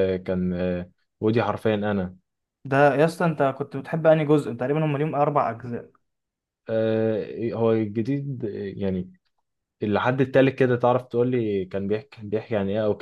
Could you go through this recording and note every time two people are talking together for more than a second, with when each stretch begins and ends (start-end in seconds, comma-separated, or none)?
none